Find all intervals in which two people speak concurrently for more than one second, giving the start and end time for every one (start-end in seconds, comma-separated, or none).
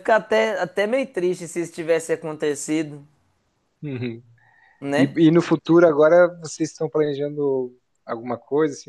none